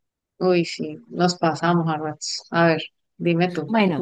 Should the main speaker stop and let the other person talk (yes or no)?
yes